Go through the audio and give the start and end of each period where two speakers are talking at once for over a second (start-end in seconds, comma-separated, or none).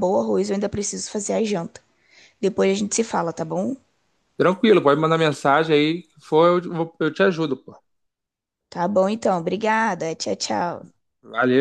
none